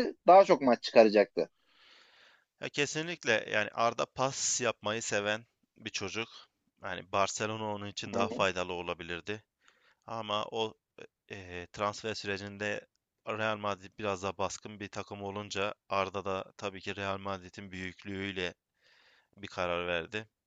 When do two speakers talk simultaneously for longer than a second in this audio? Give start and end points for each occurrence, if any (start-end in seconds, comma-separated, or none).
none